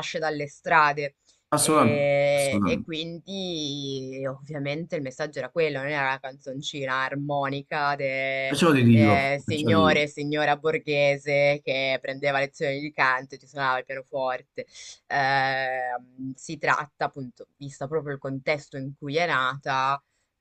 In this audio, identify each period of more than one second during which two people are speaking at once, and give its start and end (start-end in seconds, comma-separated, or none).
1.6-2.9, 8.4-10.1